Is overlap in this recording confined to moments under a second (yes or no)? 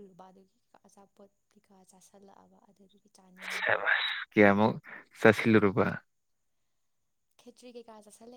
yes